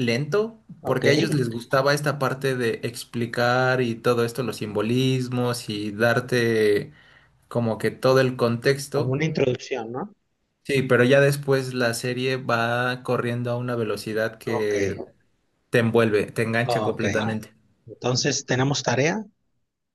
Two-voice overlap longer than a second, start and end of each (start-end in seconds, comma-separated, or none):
none